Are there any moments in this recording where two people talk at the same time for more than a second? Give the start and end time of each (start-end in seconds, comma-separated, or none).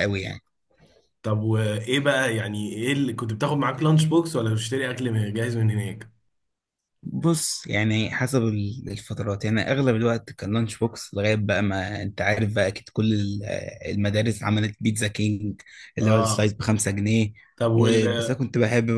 none